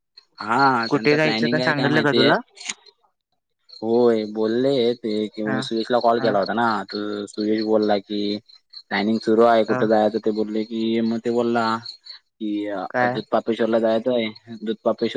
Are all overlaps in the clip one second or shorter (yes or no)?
no